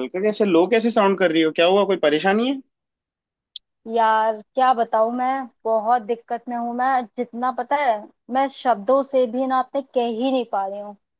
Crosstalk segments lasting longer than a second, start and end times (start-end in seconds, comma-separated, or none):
none